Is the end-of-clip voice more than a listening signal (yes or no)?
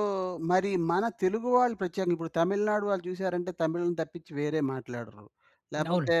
no